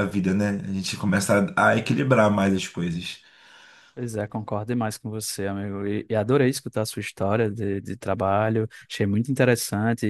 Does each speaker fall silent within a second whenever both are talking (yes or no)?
yes